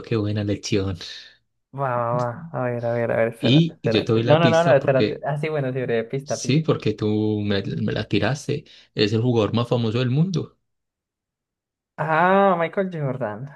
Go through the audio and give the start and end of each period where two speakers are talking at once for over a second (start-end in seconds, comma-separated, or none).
3.4-5.3